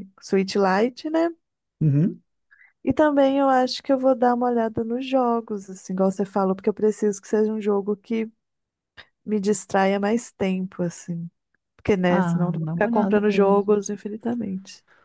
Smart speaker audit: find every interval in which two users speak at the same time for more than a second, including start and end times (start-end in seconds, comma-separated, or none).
12.1-13.8